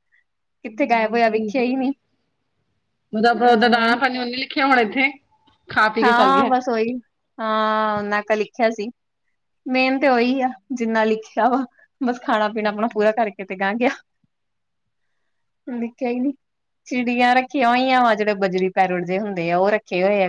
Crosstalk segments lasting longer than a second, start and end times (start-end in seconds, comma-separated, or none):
0.6-1.9